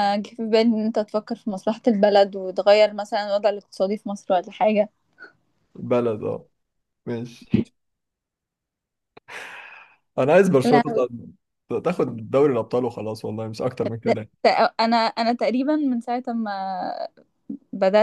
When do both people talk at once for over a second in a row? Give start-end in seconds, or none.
none